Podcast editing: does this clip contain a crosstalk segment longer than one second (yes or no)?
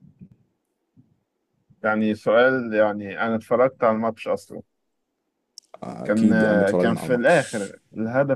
yes